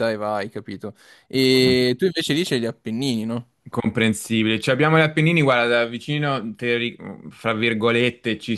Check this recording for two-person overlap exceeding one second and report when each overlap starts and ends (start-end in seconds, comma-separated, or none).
none